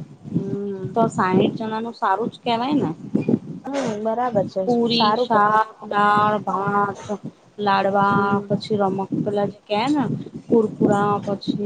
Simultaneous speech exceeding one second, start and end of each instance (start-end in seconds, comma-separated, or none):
none